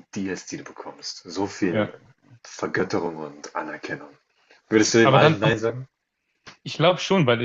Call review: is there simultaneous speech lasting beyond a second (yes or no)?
no